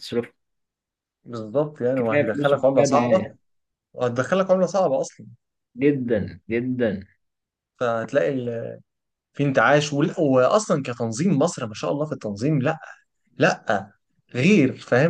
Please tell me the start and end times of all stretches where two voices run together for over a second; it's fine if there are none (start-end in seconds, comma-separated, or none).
1.9-3.3